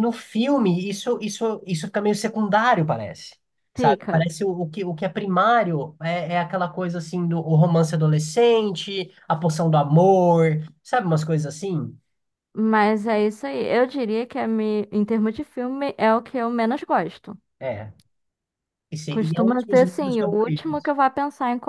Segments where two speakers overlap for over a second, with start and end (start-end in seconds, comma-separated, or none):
19.1-20.9